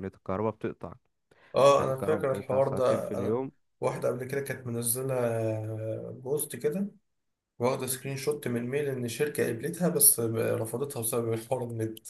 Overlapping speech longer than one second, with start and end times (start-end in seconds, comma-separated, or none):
1.8-3.4